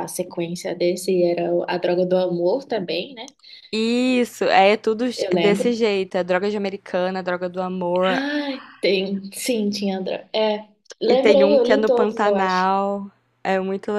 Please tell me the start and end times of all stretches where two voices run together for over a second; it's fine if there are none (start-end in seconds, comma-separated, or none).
11.1-12.7